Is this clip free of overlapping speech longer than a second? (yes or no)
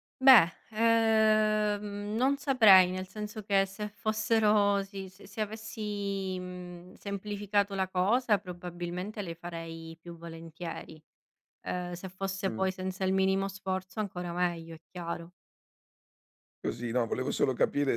yes